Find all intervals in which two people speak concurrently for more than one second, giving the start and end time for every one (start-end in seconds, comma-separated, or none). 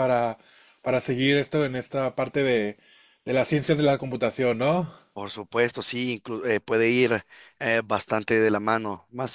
none